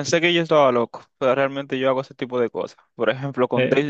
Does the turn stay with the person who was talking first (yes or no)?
yes